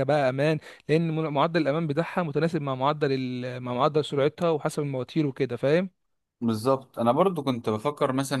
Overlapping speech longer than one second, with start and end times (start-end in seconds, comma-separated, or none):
none